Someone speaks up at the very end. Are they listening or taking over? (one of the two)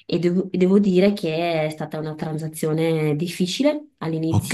listening